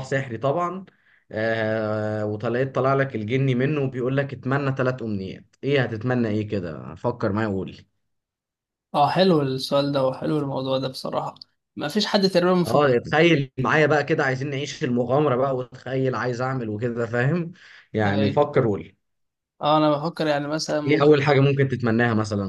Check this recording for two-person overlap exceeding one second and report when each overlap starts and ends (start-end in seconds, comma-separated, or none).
none